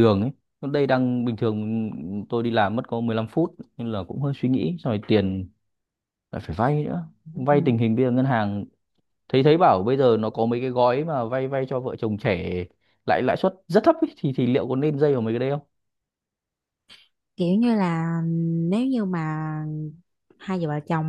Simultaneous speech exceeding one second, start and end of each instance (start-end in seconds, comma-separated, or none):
none